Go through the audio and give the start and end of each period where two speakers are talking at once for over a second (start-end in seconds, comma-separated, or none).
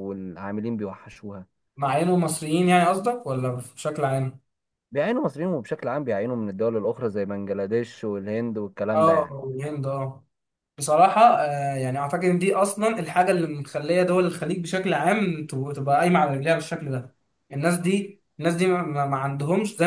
none